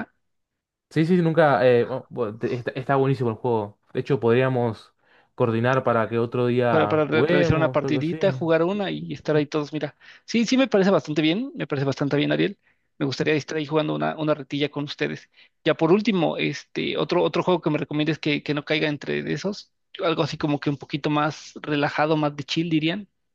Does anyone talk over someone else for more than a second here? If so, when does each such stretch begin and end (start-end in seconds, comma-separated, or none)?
6.7-8.2